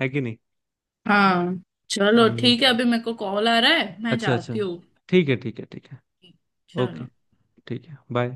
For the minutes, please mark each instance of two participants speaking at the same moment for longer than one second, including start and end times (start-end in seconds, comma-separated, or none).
none